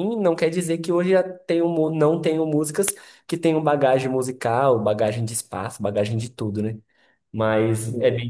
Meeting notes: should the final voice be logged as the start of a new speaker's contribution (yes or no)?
no